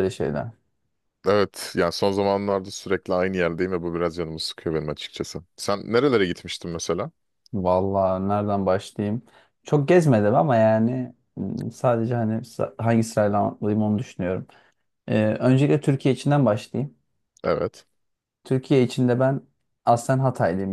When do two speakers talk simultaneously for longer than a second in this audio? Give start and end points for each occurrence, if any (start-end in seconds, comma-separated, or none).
none